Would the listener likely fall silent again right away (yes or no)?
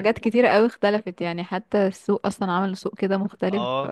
no